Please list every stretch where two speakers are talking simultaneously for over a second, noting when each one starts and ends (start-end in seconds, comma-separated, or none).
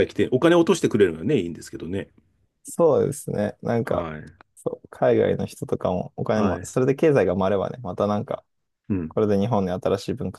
none